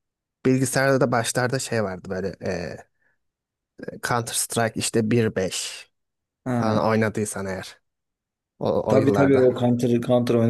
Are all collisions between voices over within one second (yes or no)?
yes